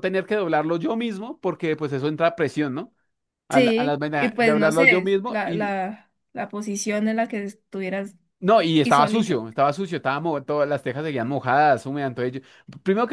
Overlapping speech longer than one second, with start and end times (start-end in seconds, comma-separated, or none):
3.5-5.7